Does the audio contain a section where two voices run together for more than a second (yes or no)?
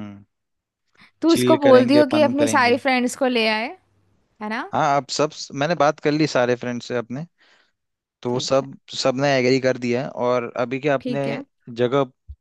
yes